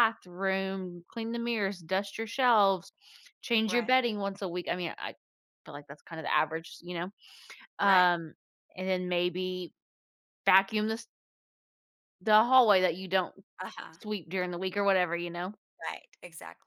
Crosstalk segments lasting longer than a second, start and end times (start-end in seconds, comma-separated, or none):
none